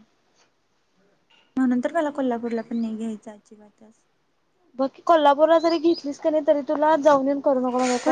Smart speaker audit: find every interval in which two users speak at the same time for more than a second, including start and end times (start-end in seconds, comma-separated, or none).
none